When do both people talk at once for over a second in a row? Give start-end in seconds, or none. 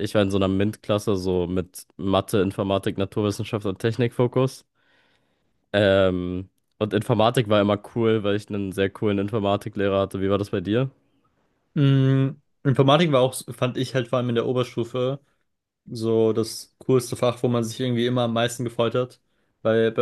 none